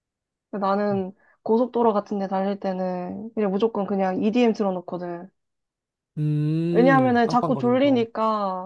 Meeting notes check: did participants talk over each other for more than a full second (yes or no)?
yes